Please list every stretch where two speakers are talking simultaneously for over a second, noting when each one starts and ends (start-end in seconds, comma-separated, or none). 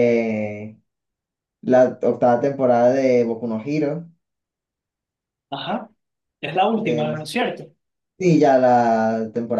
none